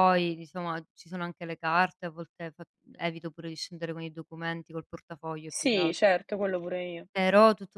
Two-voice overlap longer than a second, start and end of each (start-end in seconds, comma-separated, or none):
none